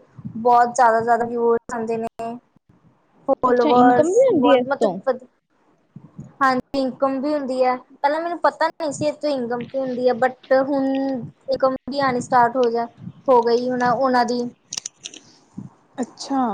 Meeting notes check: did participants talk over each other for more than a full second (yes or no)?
yes